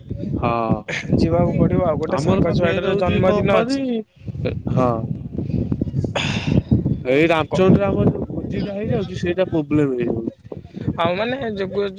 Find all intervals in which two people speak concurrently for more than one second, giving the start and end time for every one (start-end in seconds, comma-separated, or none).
2.2-3.9